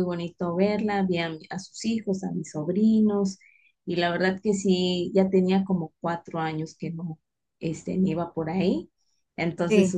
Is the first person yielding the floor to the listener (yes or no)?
no